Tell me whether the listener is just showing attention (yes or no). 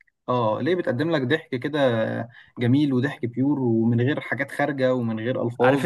no